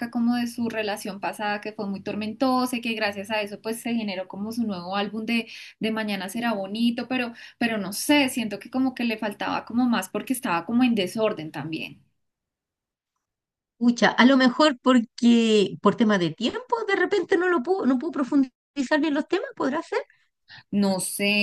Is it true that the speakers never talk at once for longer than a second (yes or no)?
yes